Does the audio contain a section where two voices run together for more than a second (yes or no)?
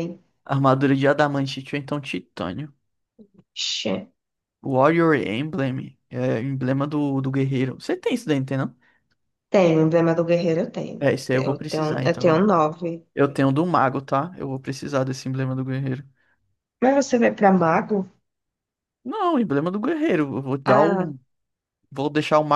yes